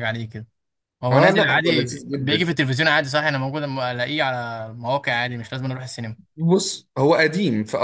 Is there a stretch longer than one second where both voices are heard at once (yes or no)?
yes